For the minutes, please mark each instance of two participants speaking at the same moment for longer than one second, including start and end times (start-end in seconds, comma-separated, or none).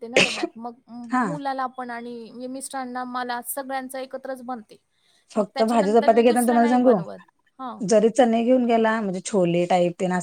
5.3-6.9